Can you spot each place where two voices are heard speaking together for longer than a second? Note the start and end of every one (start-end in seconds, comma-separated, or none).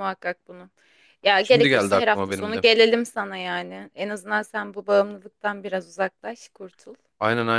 1.4-2.6